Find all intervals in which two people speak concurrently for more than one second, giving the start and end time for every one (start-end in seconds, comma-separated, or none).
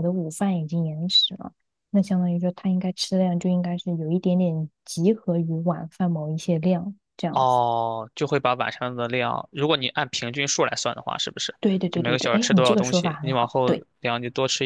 11.9-13.9